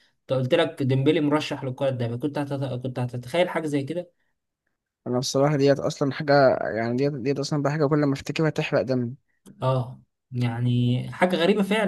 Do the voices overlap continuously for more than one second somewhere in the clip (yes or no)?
no